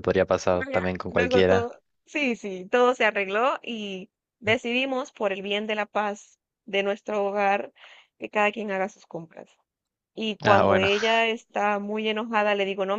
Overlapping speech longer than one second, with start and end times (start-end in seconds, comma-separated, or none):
0.5-1.7